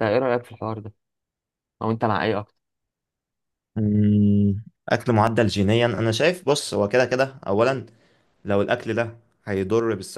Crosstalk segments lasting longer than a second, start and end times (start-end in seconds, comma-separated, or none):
none